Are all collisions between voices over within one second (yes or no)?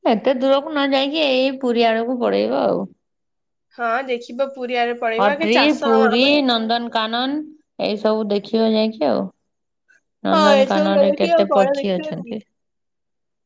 no